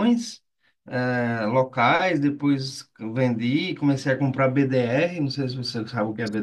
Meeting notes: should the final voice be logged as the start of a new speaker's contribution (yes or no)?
yes